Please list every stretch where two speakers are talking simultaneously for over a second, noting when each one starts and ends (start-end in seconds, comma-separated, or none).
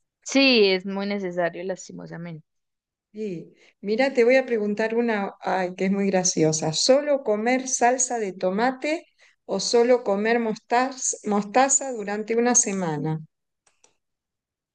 none